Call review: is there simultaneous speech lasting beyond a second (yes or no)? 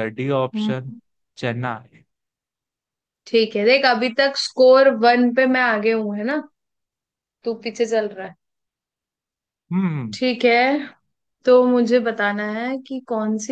no